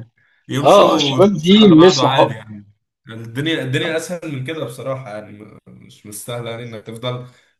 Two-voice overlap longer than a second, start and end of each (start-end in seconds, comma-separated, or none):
0.6-2.3